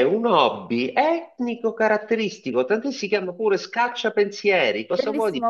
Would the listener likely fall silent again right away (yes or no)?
no